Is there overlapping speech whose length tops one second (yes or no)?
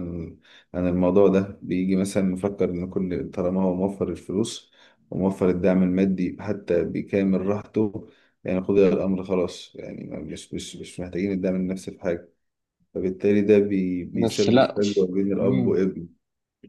yes